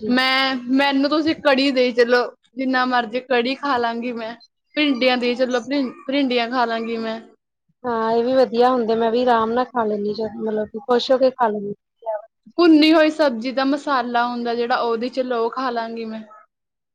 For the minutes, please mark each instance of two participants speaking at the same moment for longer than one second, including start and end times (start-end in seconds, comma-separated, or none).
none